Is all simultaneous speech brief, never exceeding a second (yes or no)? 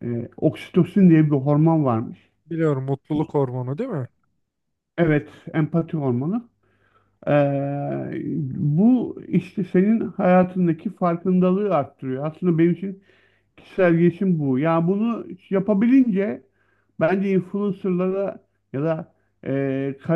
yes